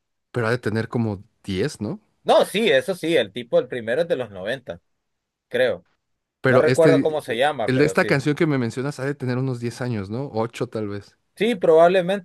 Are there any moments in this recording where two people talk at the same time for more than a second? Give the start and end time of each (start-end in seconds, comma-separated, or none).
6.4-8.1